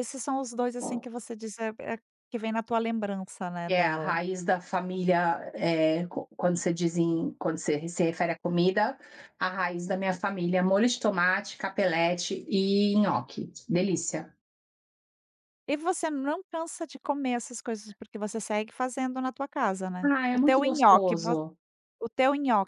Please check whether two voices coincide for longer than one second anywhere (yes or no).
yes